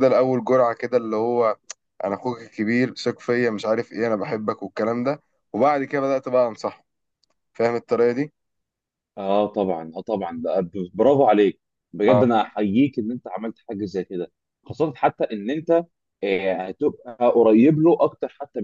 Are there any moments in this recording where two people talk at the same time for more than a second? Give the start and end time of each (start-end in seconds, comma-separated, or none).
none